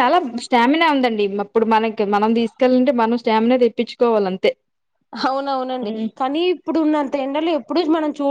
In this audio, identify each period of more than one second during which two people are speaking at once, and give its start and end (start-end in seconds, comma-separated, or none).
none